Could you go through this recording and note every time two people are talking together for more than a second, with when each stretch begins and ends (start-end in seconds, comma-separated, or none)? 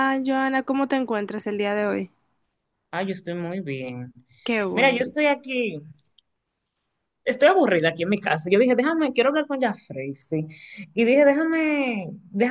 none